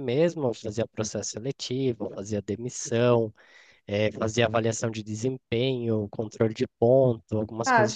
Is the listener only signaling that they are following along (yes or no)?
no